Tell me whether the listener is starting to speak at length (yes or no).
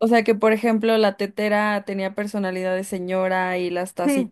no